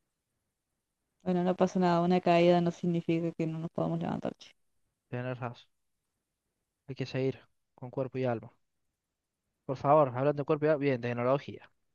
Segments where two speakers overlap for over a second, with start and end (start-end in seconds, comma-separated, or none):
none